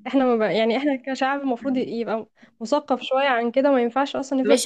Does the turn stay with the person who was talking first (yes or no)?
no